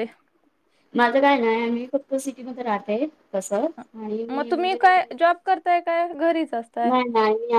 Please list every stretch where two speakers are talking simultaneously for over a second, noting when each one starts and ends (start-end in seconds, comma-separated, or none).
none